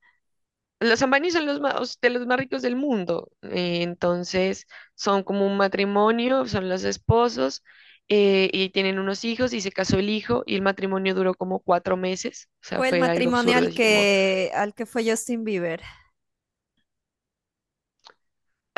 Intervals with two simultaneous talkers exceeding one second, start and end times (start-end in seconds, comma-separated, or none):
12.8-14.1